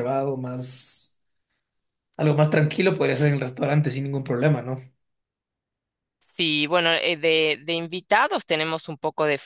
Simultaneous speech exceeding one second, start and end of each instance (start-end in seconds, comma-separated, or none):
none